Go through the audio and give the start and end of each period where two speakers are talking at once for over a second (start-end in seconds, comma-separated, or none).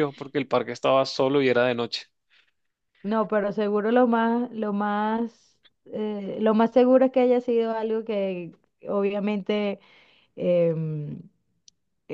none